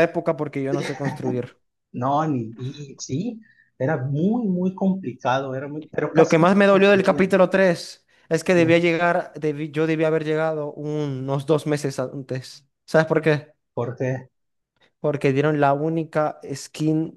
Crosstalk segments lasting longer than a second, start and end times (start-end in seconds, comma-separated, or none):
6.1-7.4